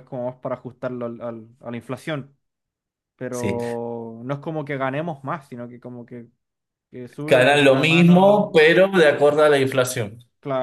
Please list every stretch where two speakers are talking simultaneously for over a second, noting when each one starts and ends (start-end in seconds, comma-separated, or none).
7.3-8.5